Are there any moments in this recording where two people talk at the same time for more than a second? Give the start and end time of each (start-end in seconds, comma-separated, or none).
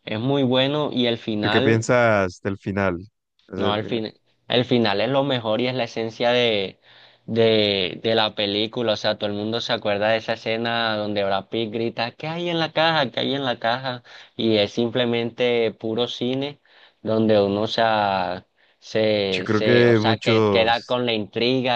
19.3-21.0